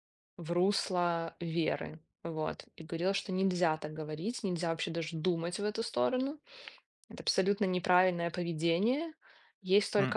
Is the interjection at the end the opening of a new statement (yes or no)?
no